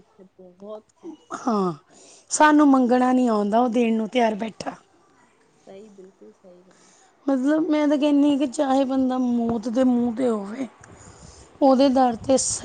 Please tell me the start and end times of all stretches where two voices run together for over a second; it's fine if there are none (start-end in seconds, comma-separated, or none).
none